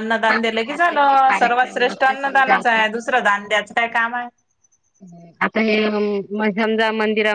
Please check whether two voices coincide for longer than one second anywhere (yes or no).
no